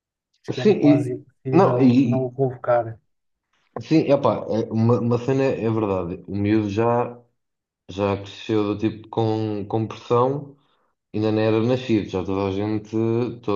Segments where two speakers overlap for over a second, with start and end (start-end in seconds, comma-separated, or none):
0.5-2.3